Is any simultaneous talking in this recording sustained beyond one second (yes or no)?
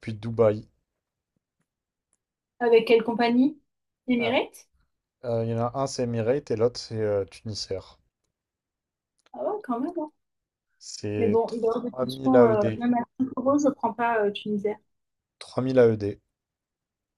yes